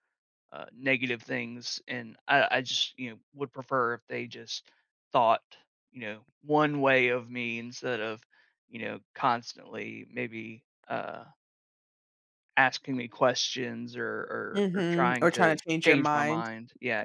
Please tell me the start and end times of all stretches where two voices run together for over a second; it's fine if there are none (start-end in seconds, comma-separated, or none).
14.5-16.5